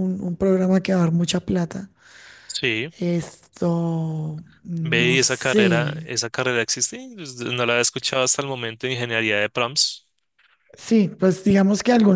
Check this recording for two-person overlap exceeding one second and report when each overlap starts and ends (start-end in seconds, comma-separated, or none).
4.8-6.1